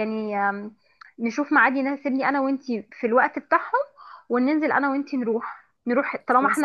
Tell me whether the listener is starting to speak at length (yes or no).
no